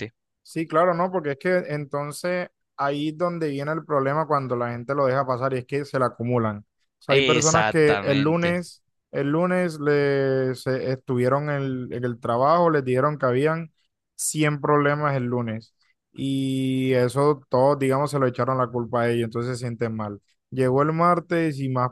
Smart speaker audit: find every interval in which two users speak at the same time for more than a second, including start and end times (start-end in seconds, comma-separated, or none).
7.1-8.5